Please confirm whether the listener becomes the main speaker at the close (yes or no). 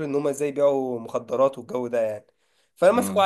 no